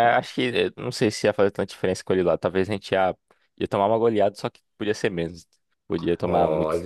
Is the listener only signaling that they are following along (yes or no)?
no